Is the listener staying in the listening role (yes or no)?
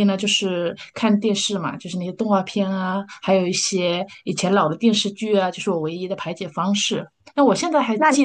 yes